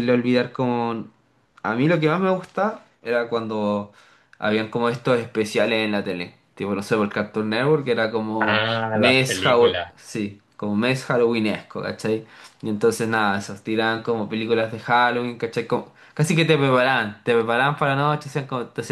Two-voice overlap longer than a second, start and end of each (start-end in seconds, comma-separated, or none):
8.4-9.9